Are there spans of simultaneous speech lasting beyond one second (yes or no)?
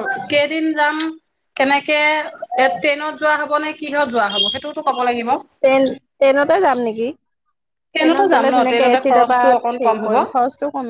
yes